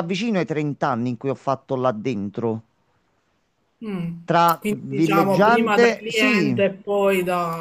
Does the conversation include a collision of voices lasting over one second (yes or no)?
yes